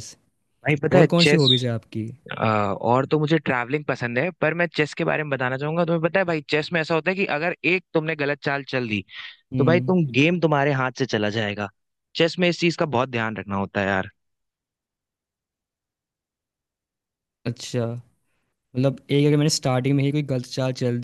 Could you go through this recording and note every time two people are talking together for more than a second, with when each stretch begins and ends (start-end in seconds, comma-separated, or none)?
none